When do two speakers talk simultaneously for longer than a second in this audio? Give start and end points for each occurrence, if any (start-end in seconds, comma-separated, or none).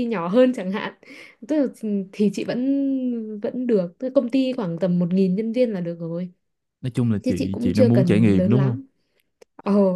7.2-8.8